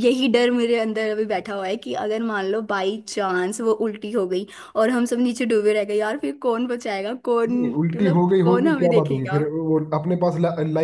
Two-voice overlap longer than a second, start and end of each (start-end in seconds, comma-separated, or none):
7.5-9.4